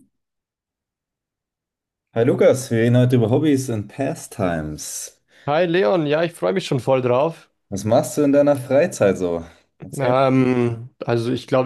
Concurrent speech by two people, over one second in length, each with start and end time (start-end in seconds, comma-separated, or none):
none